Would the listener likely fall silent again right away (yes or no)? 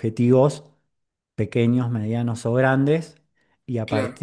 yes